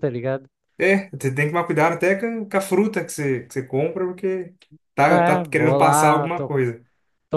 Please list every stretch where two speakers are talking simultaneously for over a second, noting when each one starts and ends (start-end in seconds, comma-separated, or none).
5.1-6.5